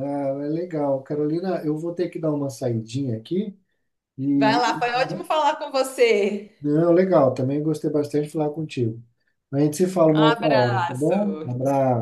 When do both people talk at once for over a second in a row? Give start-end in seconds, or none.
10.1-11.5